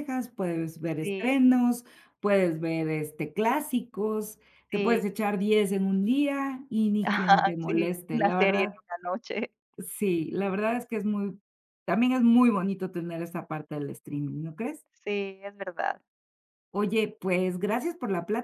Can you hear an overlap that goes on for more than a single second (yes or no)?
yes